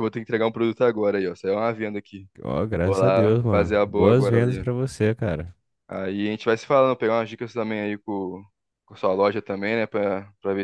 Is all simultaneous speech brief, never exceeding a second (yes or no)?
no